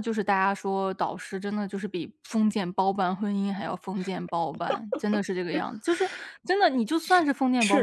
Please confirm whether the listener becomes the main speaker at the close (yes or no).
yes